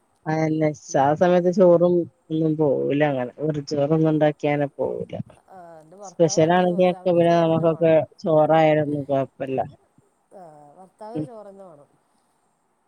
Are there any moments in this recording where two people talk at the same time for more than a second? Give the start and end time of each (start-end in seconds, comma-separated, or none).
6.1-8.0